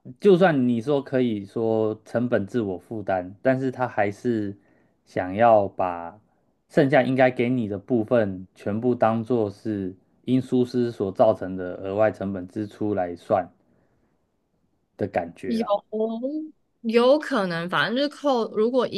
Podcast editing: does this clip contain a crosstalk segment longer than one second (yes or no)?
no